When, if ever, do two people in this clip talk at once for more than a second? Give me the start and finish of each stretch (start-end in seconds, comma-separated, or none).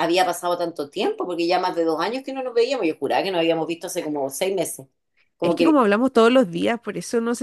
none